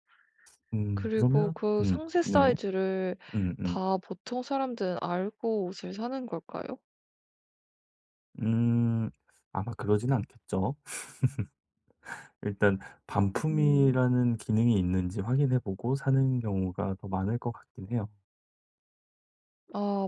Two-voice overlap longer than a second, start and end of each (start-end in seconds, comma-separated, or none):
0.9-2.5